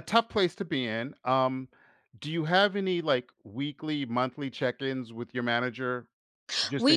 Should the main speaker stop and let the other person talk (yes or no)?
yes